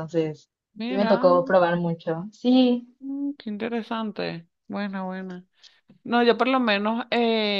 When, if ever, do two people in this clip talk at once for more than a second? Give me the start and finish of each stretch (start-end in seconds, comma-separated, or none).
none